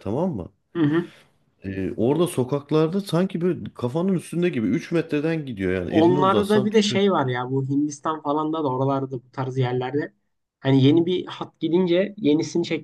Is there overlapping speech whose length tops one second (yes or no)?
yes